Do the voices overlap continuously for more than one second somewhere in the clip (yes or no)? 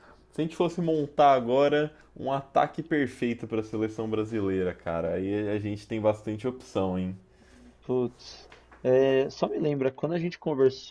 no